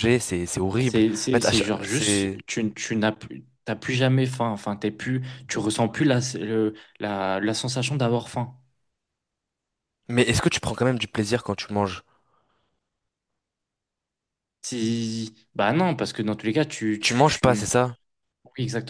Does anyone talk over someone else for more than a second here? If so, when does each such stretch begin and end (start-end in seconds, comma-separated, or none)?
0.8-2.4